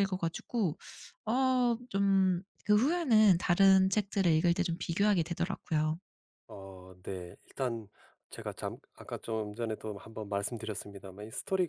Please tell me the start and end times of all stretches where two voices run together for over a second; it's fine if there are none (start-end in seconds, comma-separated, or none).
none